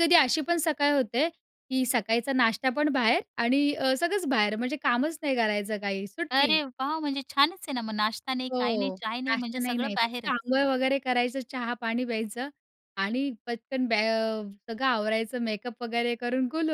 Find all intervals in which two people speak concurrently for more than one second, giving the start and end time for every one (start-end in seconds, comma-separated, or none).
8.5-10.3